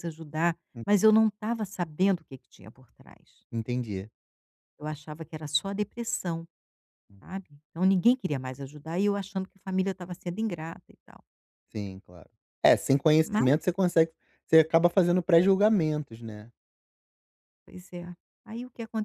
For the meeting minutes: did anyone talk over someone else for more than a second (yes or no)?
no